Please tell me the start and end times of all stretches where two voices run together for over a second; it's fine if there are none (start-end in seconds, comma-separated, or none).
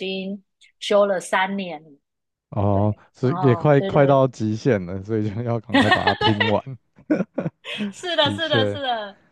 2.7-4.2